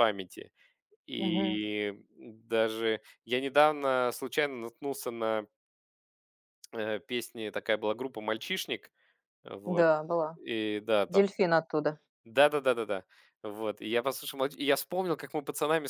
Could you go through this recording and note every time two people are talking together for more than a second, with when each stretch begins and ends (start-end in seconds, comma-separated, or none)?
none